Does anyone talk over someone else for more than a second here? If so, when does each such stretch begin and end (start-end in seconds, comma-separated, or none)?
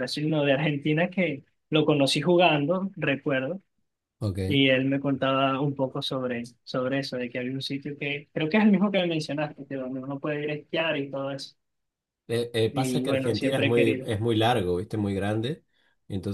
12.7-14.1